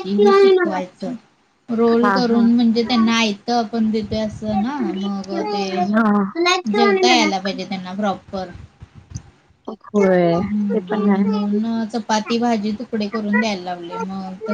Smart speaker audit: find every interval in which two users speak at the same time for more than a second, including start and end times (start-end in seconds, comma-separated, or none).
10.4-11.8